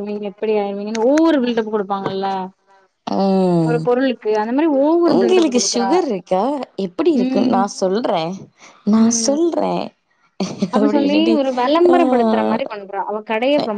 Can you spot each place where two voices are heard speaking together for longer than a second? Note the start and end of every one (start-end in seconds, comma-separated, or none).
none